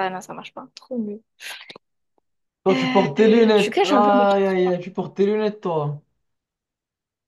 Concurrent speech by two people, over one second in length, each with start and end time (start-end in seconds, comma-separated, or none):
2.7-4.6